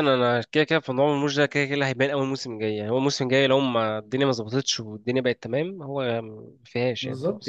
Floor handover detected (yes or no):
yes